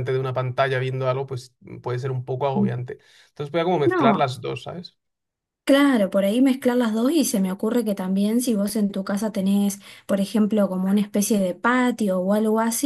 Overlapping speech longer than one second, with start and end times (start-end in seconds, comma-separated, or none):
none